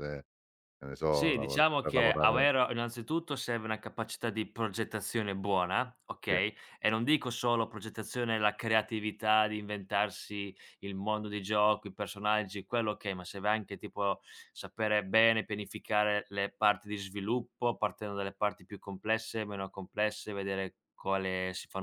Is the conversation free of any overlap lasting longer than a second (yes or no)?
no